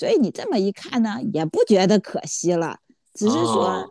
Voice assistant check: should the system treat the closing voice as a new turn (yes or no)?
no